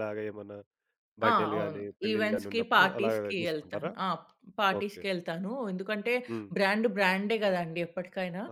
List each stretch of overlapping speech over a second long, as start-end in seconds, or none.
1.3-3.9